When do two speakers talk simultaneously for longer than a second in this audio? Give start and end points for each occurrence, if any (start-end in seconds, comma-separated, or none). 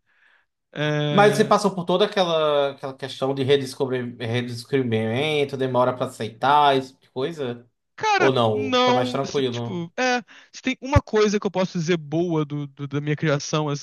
8.2-9.9